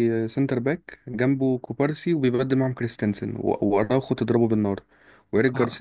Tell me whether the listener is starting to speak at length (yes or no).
no